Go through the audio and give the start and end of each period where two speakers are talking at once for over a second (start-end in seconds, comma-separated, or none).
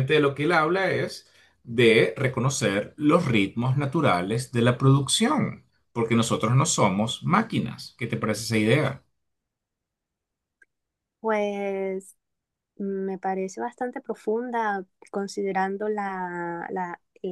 none